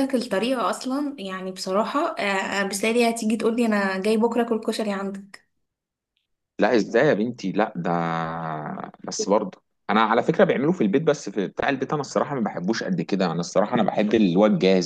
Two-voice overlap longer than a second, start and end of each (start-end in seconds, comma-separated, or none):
none